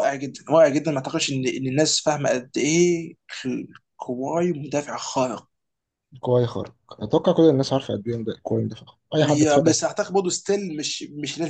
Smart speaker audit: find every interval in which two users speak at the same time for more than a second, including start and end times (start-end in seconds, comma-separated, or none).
none